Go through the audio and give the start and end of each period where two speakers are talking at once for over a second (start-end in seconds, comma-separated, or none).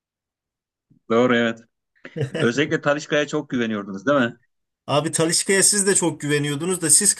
none